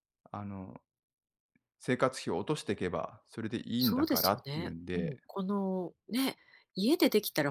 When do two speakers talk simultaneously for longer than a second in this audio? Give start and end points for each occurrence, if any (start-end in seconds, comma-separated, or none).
3.8-5.2